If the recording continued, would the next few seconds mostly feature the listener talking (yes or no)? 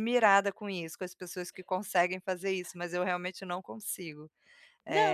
yes